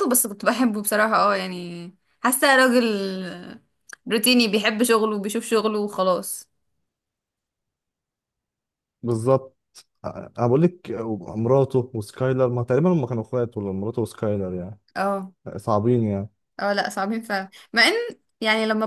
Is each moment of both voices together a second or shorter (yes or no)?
yes